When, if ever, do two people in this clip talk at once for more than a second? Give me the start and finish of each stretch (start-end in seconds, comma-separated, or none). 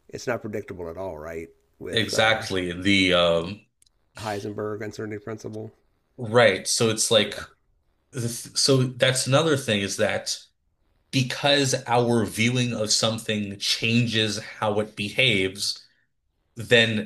none